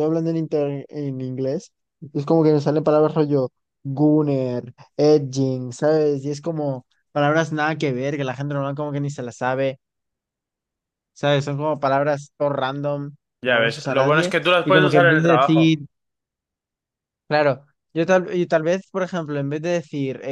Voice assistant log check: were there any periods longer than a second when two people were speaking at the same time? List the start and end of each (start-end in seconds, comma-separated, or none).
13.4-15.8